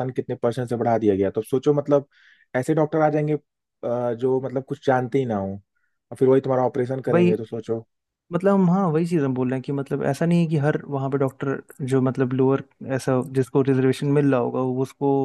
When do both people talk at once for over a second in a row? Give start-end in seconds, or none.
none